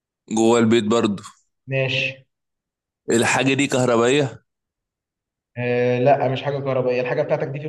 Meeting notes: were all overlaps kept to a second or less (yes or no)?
yes